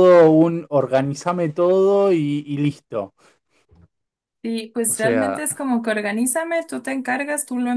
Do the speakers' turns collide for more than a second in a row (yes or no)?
no